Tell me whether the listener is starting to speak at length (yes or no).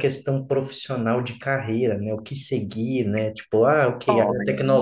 no